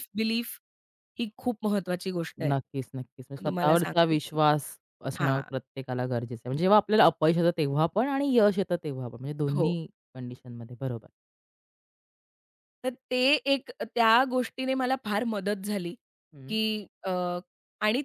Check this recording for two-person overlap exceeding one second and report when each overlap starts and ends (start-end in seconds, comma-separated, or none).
2.4-4.3